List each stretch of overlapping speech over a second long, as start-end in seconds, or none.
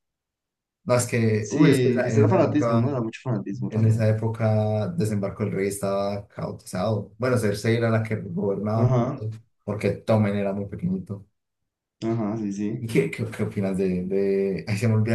1.4-3.0